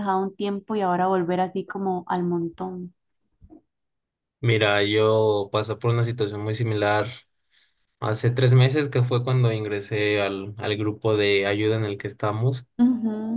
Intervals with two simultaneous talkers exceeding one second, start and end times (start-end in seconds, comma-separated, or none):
none